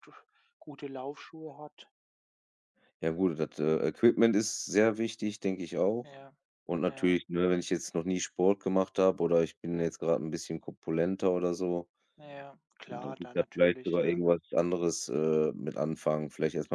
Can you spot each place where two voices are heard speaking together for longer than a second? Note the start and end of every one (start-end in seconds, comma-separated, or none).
12.9-14.2